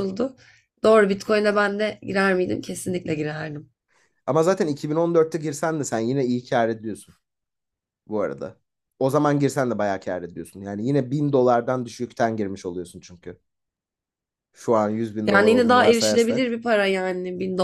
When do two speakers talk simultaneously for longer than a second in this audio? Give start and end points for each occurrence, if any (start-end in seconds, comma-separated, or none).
15.2-16.6